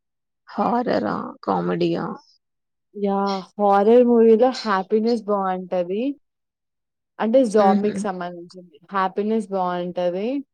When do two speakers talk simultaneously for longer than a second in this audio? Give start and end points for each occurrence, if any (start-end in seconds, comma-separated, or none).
none